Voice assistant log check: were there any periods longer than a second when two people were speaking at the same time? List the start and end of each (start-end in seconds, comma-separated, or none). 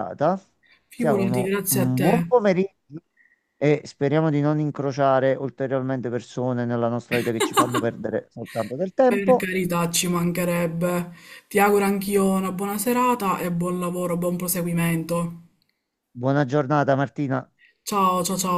0.9-2.3